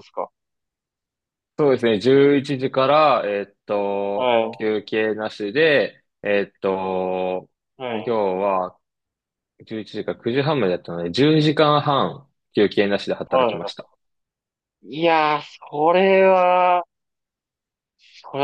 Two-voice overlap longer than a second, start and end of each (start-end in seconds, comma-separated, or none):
none